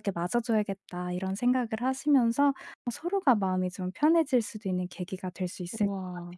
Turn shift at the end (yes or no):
yes